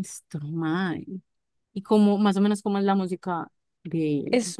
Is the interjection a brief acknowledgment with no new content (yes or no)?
no